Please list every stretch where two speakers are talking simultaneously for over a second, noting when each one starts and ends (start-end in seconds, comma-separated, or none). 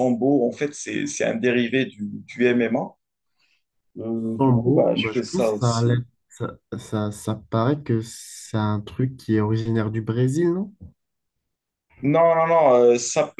4.4-6.0